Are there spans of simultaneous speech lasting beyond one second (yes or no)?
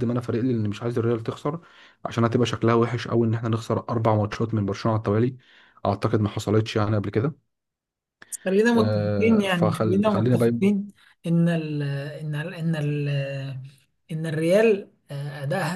yes